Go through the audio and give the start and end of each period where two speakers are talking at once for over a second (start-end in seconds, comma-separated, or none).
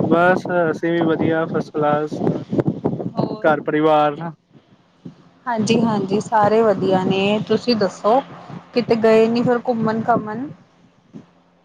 none